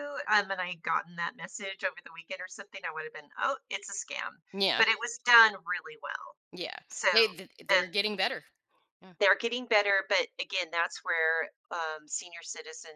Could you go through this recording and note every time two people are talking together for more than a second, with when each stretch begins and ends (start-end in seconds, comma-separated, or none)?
none